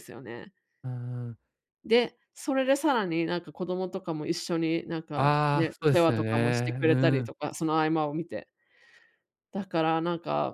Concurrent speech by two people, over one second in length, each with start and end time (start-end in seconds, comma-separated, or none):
5.1-7.3